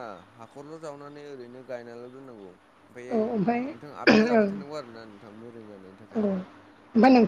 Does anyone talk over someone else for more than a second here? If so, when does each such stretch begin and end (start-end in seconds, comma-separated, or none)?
3.2-4.5